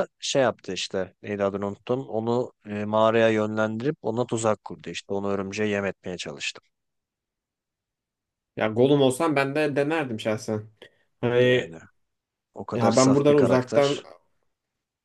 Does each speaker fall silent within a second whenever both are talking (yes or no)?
no